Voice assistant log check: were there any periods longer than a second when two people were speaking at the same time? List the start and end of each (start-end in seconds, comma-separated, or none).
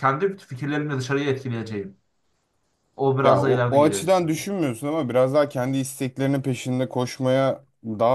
3.2-4.5